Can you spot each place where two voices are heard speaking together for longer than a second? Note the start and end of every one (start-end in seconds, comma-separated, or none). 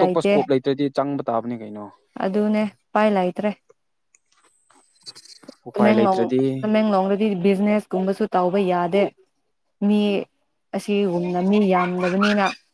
none